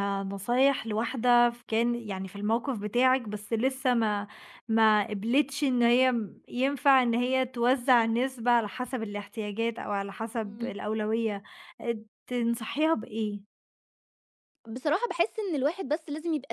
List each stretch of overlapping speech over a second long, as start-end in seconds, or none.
none